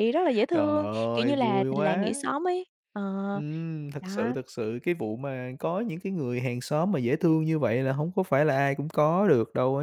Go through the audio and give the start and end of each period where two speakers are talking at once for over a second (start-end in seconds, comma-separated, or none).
0.5-2.1